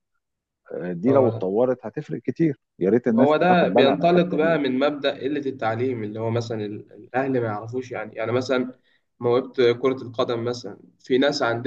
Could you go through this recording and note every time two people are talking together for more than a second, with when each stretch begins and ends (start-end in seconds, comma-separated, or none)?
3.1-4.6